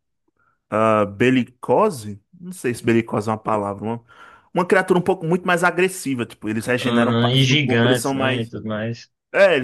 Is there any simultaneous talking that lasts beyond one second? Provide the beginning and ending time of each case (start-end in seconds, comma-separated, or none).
6.8-8.5